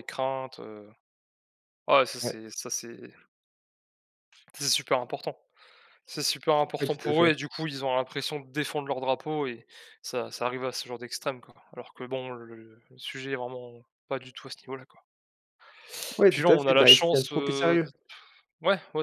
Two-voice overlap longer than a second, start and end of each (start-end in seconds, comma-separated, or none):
16.3-17.9